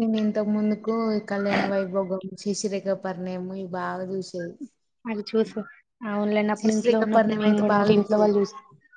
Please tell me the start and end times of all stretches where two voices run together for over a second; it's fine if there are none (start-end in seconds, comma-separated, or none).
6.6-8.3